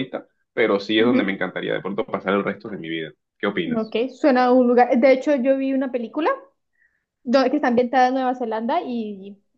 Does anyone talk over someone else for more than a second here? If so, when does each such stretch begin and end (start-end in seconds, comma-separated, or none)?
none